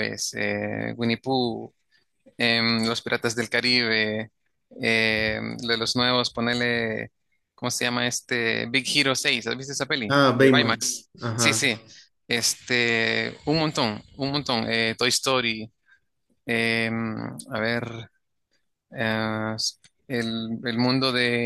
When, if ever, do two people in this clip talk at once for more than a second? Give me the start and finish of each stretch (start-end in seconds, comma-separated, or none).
10.1-11.7